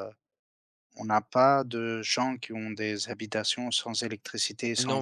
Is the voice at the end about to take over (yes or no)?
yes